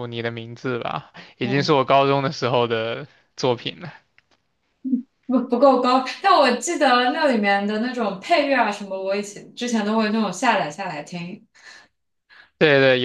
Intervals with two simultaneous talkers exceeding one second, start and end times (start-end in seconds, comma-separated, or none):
none